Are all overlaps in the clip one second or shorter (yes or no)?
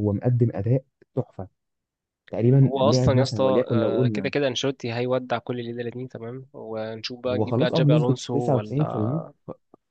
no